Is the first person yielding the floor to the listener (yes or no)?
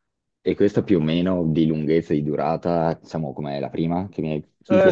yes